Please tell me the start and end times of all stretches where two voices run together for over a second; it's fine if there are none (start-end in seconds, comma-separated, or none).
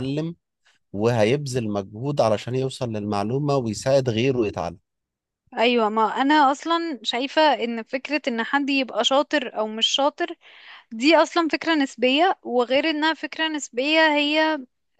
none